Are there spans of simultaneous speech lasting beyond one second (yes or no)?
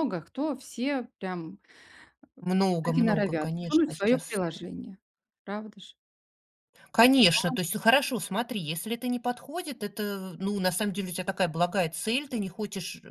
yes